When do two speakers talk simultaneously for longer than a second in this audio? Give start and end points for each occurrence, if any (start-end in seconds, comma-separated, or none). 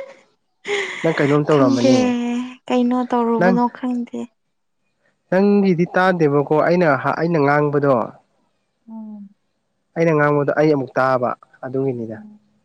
none